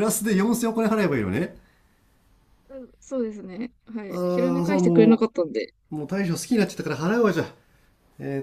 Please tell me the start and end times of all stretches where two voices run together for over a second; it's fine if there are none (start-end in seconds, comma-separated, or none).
4.1-5.3